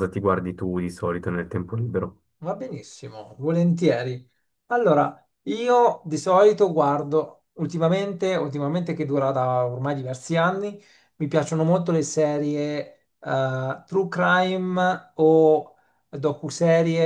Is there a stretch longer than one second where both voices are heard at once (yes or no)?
no